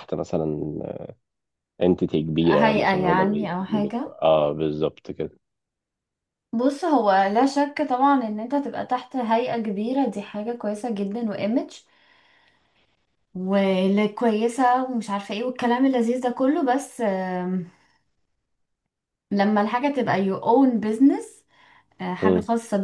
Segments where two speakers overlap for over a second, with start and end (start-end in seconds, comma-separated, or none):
2.4-4.2